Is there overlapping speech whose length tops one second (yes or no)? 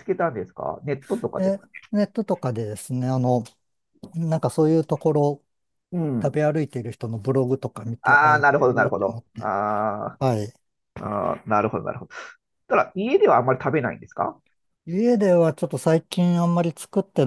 yes